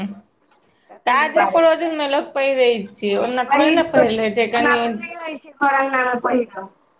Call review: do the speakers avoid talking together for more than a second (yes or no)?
yes